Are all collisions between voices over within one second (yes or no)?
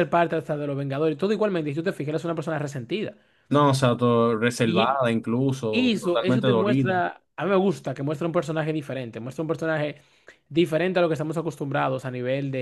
no